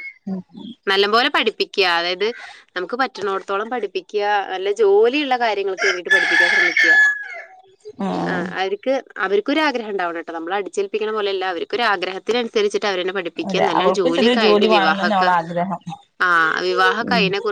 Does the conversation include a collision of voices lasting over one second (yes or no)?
yes